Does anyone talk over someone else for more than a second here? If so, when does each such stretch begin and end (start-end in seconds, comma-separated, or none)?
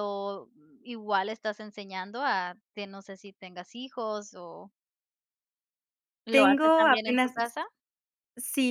6.3-7.5